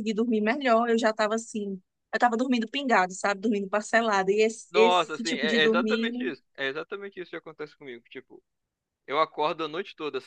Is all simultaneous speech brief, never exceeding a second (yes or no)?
no